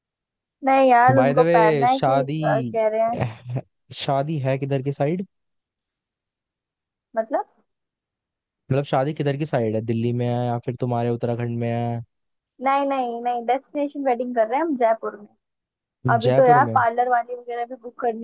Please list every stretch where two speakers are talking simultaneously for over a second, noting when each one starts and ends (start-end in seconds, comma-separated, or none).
1.1-2.4